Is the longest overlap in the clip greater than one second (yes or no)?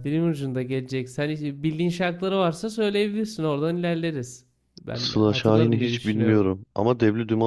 yes